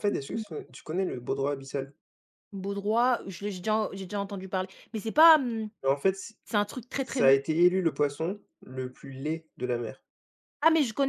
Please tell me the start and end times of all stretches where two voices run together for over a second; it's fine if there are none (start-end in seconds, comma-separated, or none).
none